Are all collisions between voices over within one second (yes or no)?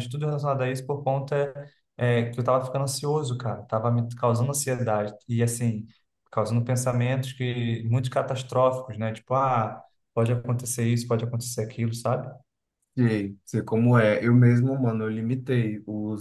yes